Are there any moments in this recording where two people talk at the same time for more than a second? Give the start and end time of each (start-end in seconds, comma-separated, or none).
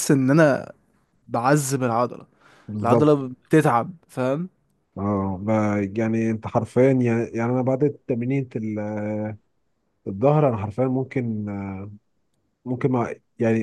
none